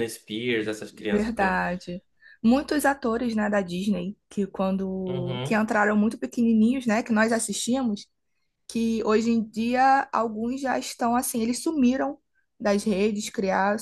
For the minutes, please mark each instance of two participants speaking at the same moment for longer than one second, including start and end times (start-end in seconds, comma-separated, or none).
none